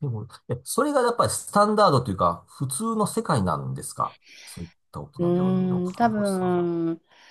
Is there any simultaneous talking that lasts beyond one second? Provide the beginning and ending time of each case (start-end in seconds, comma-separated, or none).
5.2-6.7